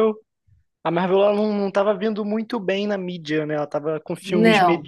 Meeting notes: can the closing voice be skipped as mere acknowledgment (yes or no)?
yes